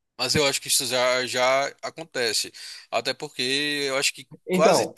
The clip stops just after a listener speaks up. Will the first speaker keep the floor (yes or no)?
yes